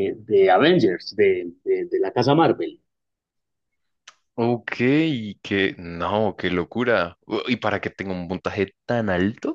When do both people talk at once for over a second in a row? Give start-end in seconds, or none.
none